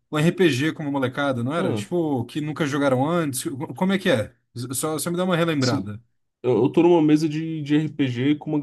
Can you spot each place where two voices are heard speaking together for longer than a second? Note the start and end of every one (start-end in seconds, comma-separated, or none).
none